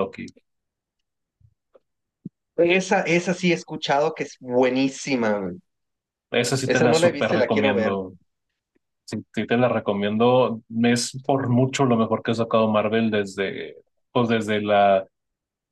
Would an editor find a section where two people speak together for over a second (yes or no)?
yes